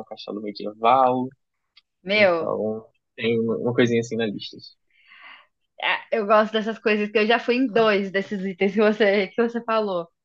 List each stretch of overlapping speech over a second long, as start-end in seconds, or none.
none